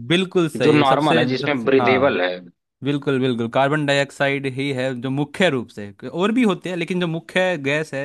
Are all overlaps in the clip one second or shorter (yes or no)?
no